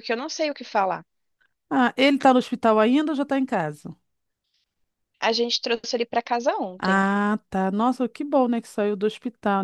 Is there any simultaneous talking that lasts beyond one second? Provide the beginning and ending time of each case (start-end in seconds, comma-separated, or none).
none